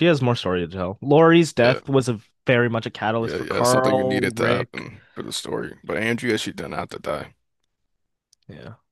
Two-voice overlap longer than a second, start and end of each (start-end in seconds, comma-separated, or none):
3.2-4.8